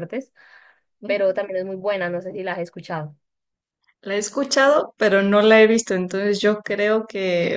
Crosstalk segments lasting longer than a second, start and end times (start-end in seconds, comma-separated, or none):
none